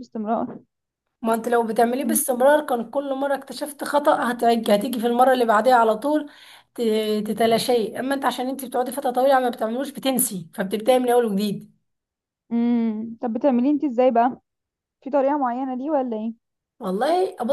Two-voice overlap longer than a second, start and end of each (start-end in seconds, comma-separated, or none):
none